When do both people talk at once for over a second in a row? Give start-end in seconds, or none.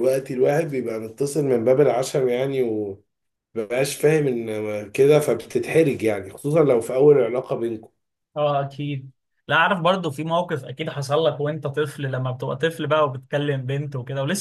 none